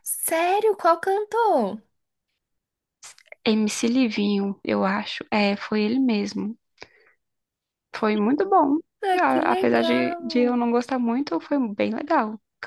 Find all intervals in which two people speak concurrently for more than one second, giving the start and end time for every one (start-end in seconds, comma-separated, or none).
9.2-10.5